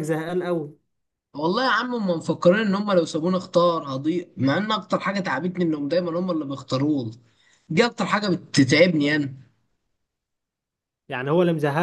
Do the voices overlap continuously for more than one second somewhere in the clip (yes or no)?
no